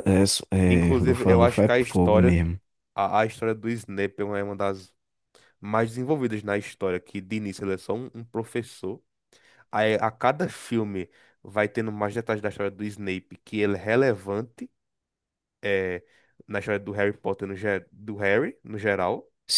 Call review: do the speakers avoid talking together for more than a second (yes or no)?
no